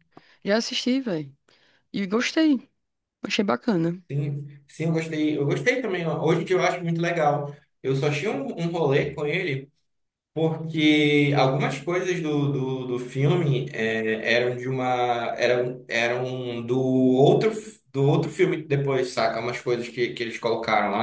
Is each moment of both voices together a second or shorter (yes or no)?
yes